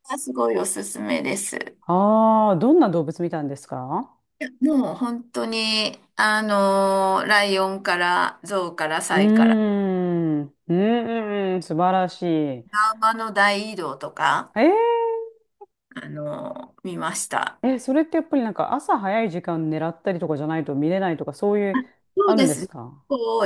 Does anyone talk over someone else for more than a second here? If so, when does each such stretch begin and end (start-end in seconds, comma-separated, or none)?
none